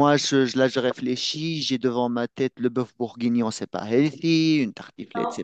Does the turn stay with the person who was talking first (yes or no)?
yes